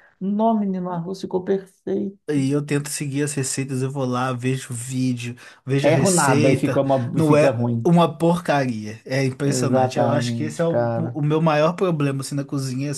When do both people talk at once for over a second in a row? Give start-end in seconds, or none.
5.8-7.9, 9.4-11.2